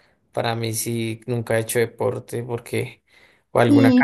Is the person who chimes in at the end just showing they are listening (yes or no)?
no